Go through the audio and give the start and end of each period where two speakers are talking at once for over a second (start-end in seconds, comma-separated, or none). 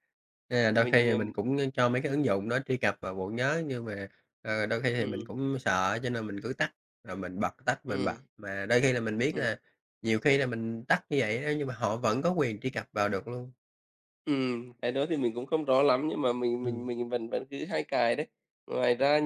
none